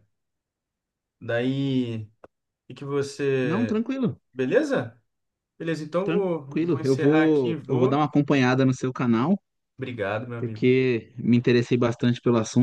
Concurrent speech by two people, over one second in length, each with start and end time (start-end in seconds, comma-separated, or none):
6.0-8.1